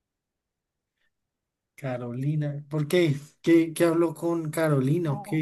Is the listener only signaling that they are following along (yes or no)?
no